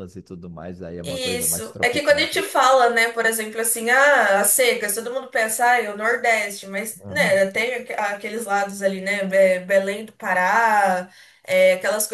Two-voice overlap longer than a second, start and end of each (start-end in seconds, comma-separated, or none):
1.1-2.3